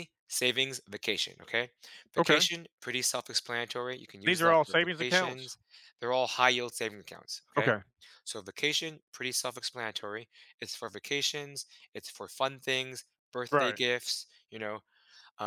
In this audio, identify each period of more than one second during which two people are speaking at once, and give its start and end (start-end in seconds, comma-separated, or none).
4.2-5.5